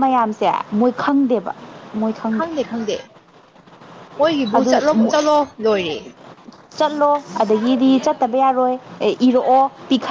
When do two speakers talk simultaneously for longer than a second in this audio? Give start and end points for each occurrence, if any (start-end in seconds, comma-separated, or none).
none